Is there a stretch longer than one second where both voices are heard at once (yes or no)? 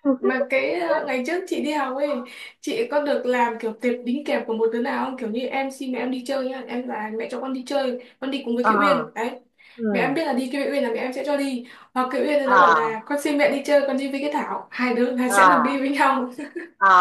no